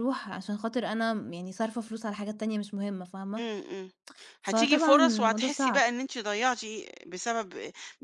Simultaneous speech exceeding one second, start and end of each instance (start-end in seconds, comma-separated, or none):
4.4-5.8